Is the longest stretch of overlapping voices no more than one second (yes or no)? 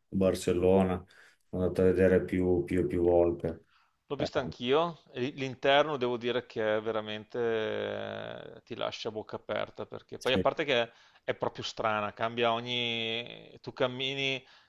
yes